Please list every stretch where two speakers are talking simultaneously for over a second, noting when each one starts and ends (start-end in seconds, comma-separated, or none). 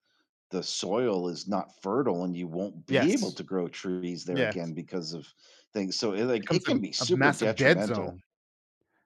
6.4-8.2